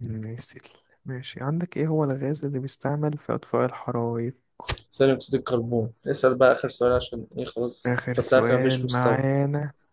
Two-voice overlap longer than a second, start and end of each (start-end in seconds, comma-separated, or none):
7.8-9.2